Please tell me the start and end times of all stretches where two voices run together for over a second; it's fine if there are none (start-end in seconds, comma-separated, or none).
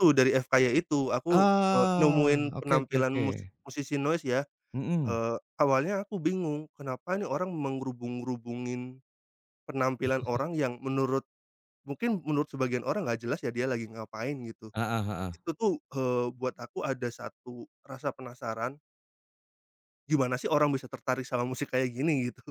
1.4-3.2